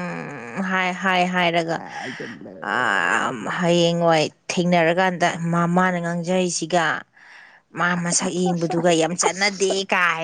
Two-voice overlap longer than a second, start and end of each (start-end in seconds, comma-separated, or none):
8.0-9.7